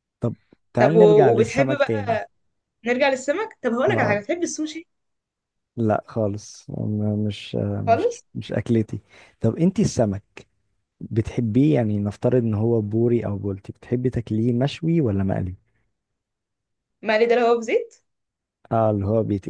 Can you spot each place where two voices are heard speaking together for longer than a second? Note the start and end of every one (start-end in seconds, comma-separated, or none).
0.8-2.2